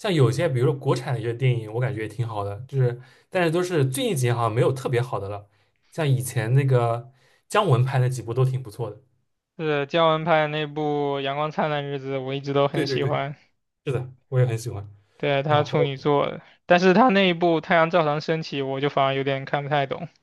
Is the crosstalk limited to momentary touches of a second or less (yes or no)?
yes